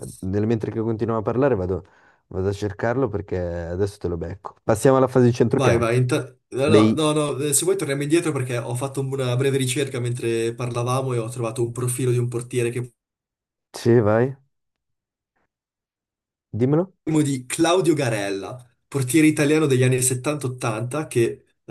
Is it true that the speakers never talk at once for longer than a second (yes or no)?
yes